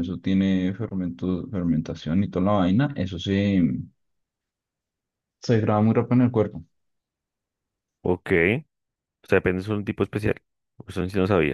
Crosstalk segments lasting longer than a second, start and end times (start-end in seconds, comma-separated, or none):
none